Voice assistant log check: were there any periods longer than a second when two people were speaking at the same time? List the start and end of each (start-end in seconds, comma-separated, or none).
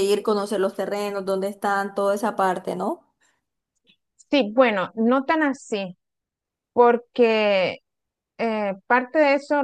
none